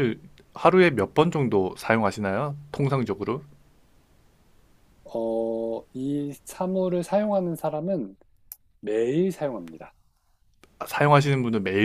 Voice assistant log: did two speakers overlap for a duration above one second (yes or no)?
no